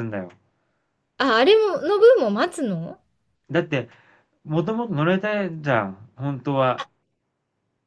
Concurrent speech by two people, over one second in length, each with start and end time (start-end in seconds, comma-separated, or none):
none